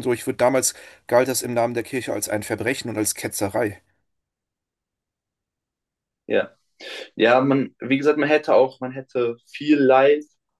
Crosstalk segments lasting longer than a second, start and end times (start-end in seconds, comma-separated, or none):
none